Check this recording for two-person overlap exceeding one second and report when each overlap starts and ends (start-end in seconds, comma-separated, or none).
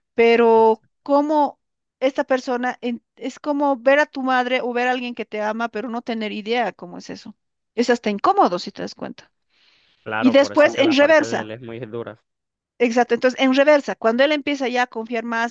10.2-11.5